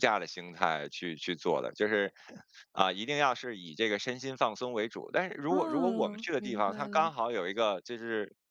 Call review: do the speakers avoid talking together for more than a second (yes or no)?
no